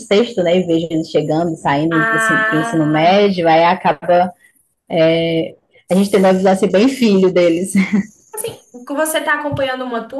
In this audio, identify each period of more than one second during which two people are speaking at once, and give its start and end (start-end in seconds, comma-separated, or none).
1.9-3.3